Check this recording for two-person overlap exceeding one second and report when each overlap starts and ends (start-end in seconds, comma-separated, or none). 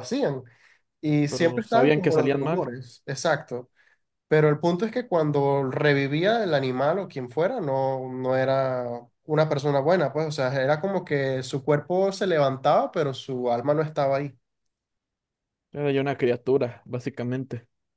1.3-2.7